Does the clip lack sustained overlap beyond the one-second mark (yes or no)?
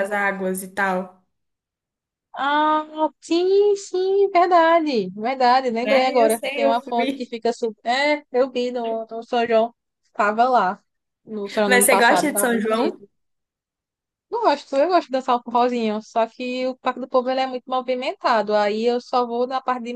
no